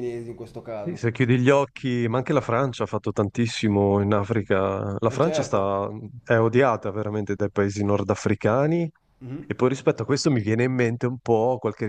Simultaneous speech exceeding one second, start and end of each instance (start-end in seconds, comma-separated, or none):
none